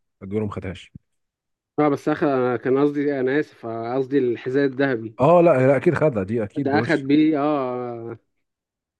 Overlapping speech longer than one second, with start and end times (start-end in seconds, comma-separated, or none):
none